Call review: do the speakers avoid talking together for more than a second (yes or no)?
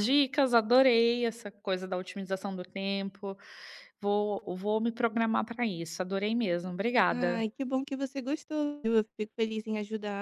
yes